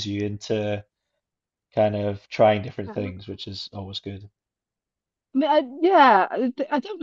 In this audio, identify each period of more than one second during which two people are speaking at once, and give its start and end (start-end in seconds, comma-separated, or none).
none